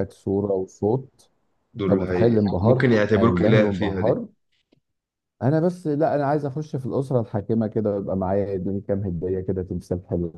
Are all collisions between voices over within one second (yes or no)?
no